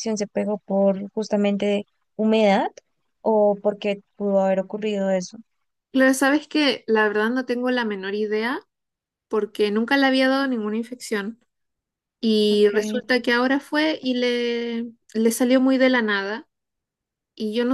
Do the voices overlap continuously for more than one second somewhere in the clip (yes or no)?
no